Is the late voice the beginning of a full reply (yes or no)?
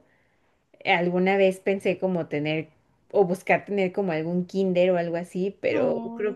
no